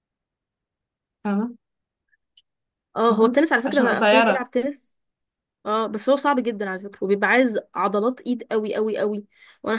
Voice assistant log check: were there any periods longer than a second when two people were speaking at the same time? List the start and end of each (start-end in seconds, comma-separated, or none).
3.1-4.4